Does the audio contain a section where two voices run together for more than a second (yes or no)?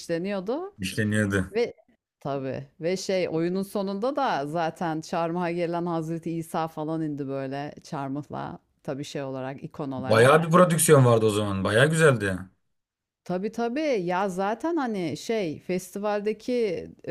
no